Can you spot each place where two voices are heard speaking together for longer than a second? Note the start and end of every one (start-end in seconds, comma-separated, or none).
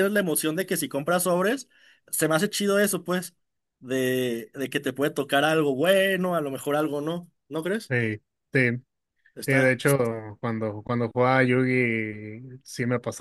none